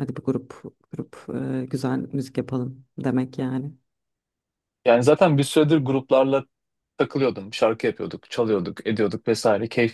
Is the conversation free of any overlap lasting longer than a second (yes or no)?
yes